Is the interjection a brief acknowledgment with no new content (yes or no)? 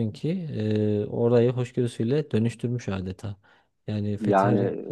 yes